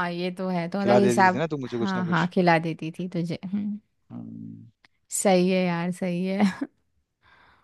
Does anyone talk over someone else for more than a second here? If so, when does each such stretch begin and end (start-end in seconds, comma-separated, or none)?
0.8-2.3